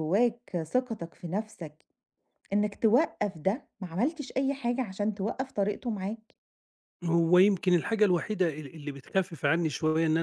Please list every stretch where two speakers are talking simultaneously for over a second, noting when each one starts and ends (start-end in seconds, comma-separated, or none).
none